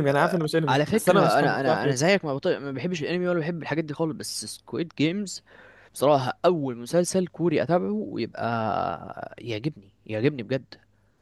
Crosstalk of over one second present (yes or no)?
yes